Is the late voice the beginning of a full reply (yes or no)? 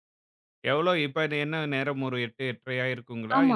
yes